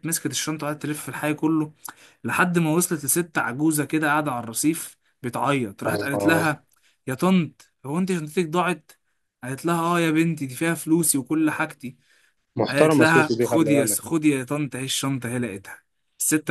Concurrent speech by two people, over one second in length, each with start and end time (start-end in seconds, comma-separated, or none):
12.7-14.0